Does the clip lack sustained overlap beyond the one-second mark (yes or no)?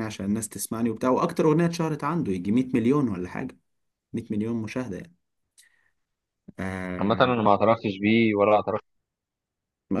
yes